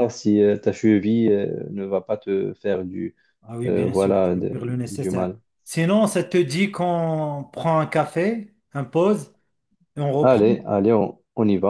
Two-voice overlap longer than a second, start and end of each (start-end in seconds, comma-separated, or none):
3.6-5.4